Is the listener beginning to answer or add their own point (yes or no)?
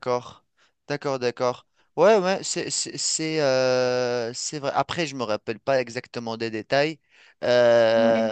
no